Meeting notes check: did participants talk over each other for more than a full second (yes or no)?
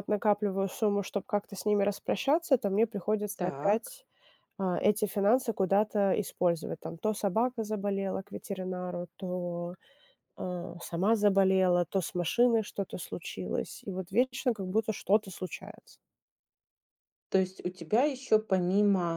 no